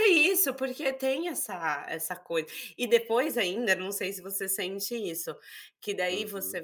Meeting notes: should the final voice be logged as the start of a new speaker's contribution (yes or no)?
no